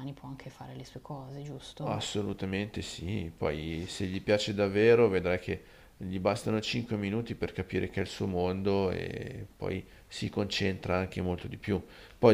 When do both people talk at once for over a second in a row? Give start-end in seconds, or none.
none